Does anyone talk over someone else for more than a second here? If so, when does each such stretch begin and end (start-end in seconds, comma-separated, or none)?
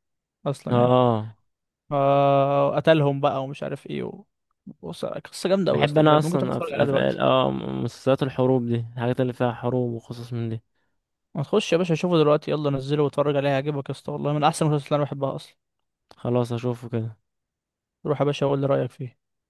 5.7-7.2